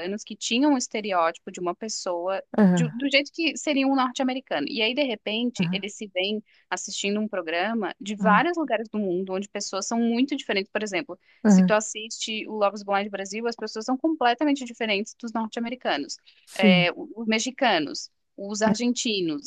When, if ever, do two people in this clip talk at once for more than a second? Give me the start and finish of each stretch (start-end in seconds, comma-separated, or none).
none